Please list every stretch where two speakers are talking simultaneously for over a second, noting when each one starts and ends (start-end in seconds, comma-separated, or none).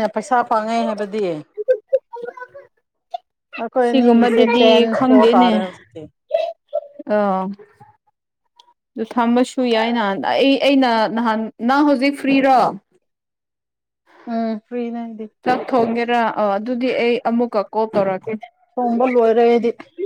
3.8-5.5